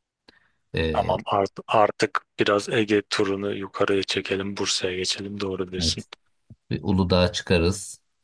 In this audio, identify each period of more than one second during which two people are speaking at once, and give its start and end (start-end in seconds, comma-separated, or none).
none